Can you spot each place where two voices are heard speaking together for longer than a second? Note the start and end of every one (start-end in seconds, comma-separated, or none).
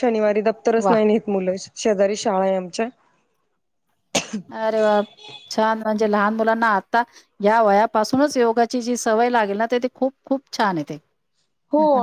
none